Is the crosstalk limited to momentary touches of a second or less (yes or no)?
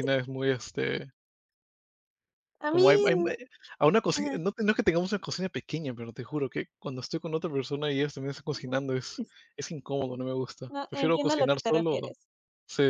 no